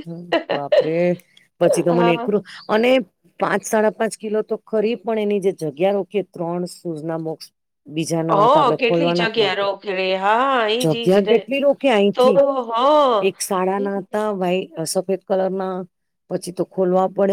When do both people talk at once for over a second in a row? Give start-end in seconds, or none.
8.3-9.7